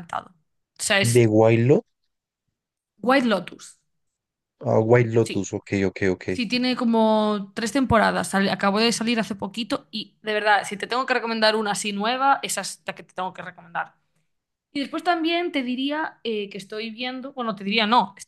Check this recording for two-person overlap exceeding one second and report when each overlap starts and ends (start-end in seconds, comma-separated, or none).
none